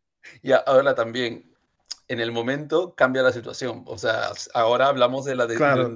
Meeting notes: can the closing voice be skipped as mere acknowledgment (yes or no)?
yes